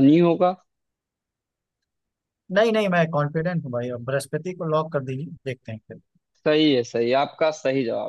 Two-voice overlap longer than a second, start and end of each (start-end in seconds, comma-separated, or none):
none